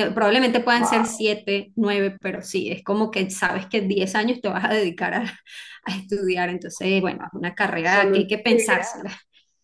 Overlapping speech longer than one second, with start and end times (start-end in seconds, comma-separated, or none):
7.8-9.1